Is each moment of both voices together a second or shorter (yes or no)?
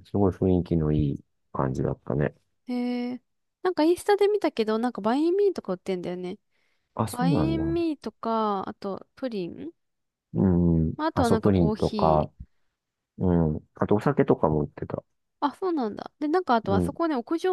no